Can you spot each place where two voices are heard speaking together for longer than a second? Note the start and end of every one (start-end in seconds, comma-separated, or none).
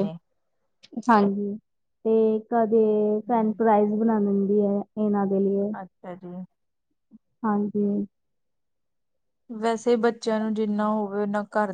none